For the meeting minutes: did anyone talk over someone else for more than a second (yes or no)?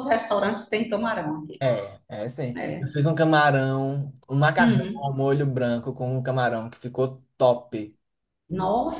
no